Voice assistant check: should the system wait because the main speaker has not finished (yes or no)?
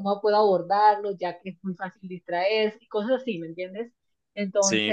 no